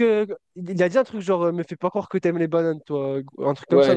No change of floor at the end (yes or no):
no